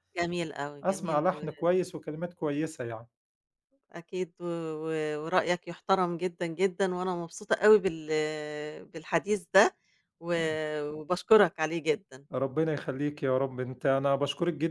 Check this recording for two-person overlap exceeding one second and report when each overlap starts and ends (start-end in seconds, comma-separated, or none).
none